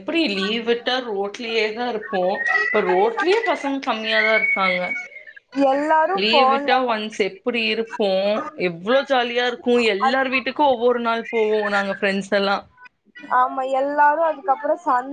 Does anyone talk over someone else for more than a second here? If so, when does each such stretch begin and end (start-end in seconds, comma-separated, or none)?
none